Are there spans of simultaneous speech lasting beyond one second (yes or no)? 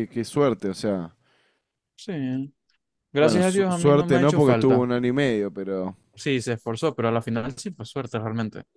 yes